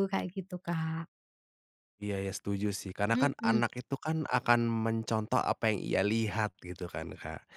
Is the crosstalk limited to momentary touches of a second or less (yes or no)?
yes